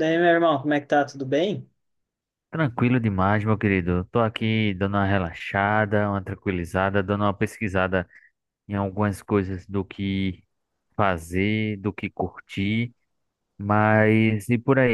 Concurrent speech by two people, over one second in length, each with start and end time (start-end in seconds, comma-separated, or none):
none